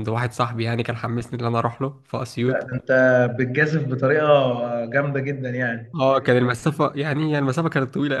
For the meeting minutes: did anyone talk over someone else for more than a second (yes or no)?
no